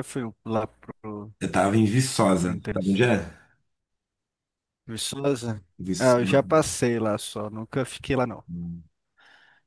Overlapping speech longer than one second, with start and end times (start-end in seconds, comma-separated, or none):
none